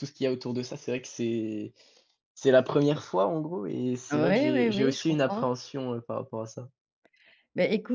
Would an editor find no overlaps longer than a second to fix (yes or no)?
no